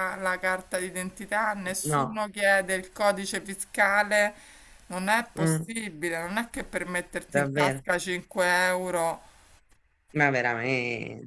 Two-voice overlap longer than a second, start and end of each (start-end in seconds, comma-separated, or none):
none